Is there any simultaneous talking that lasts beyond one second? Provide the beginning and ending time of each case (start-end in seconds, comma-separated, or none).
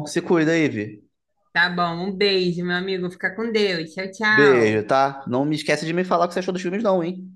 none